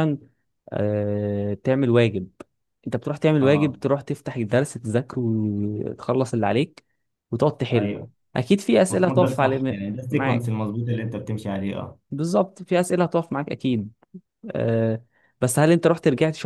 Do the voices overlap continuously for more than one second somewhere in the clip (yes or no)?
yes